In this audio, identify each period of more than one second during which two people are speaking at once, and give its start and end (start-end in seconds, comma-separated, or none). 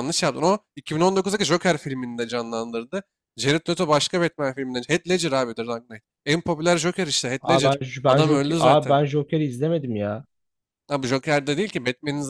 7.4-9.0